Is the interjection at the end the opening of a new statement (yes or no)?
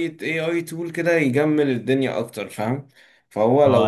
yes